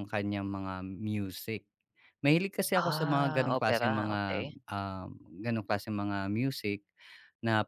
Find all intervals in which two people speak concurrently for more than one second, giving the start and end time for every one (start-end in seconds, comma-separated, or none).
2.8-4.5